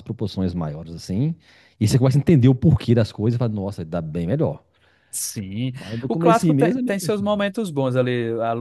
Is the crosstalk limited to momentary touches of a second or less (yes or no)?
no